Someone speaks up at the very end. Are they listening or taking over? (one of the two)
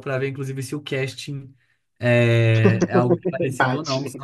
listening